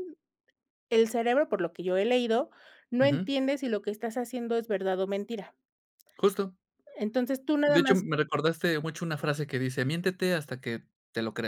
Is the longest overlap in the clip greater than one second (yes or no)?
no